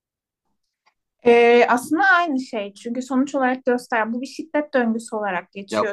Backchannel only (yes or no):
no